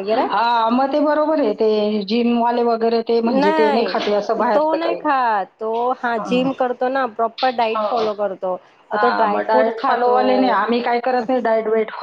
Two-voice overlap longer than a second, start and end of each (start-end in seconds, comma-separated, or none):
9.0-10.6